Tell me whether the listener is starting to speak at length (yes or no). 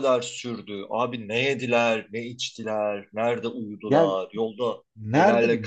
yes